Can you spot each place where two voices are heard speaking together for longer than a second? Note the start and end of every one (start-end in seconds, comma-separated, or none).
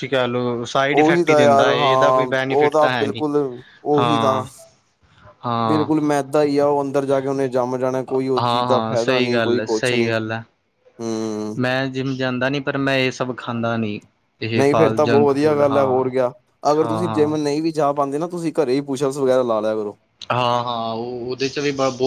1.0-3.2, 8.4-10.1